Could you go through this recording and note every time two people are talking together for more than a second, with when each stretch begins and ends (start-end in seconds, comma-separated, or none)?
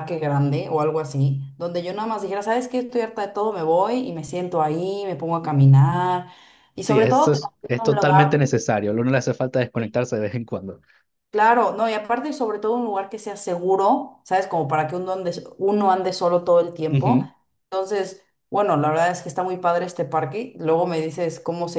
6.8-8.5